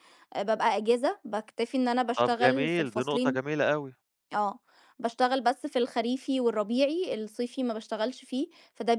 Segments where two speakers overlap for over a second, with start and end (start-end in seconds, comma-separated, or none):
2.2-3.5